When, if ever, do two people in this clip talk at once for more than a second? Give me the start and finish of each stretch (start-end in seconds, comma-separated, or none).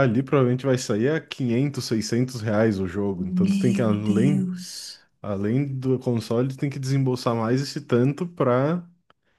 3.2-4.5